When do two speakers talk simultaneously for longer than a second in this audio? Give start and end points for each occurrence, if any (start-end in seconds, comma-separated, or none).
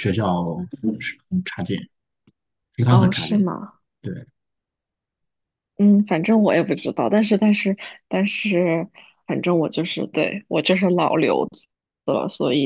none